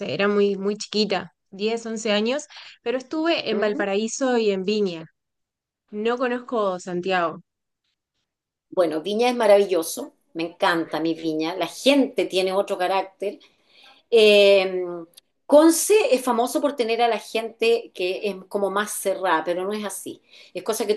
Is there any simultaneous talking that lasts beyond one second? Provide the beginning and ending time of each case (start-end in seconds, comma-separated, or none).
none